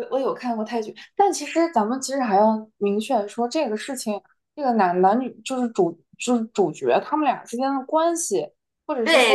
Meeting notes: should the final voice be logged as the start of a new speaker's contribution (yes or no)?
yes